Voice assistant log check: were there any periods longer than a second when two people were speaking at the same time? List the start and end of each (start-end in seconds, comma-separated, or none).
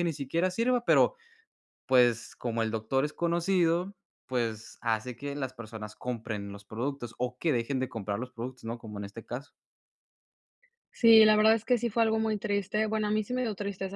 none